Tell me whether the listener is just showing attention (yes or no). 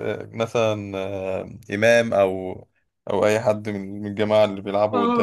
no